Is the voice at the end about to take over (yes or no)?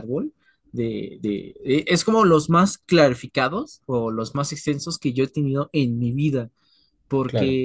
no